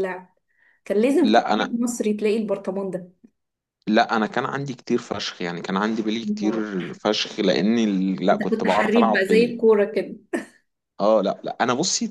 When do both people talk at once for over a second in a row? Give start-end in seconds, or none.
8.3-9.6